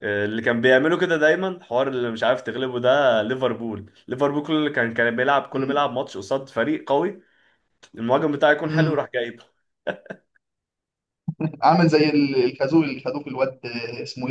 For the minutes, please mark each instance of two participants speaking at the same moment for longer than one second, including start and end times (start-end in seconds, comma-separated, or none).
none